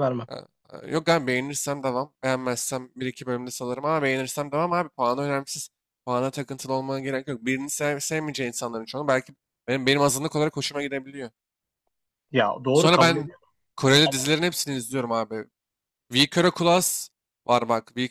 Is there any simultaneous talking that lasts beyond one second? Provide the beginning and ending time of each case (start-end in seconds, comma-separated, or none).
none